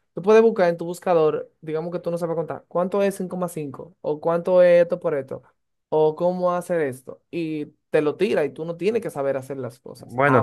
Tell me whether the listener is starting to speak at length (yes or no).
yes